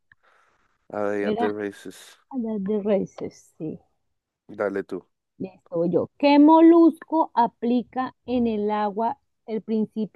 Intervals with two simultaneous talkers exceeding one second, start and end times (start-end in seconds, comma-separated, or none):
none